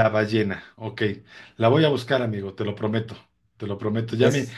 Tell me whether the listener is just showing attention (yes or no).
yes